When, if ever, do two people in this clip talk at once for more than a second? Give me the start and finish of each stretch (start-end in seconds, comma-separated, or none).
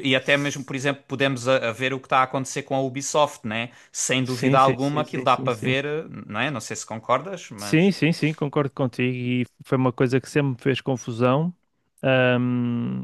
4.2-5.8